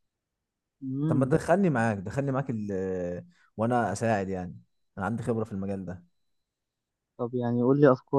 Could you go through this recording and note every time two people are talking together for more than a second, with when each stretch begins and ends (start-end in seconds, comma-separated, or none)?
none